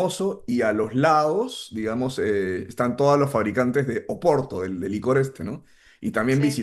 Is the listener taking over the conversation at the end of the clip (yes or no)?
no